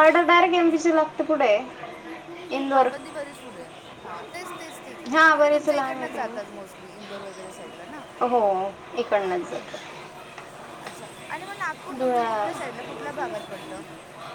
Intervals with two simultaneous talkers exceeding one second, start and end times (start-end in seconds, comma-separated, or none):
5.3-6.6